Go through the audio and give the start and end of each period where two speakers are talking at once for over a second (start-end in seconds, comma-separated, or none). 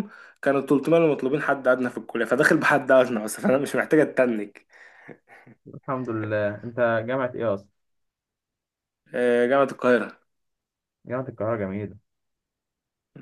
none